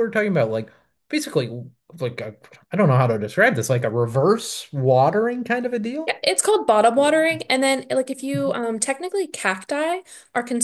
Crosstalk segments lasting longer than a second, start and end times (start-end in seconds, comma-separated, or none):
none